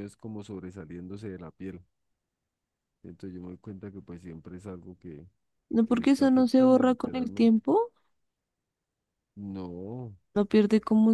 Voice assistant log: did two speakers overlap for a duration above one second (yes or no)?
yes